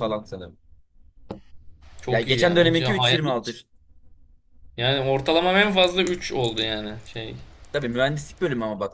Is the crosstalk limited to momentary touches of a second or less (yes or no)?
no